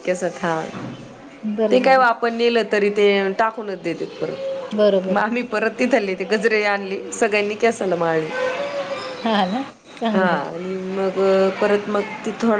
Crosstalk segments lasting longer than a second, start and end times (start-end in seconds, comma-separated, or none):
none